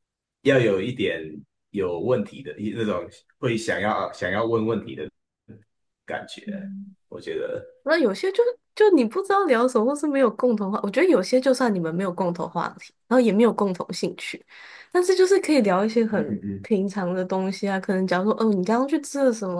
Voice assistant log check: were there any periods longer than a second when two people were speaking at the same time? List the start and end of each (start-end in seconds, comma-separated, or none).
none